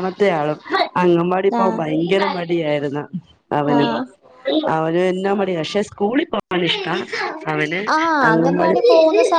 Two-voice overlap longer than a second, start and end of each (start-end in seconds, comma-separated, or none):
none